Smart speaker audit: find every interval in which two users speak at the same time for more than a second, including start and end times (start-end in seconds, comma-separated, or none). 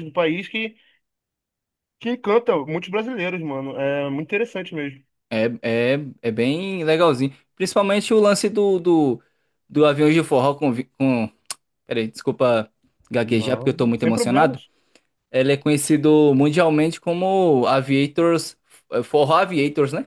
13.2-14.6